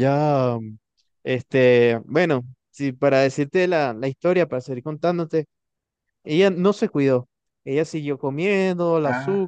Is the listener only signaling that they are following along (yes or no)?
yes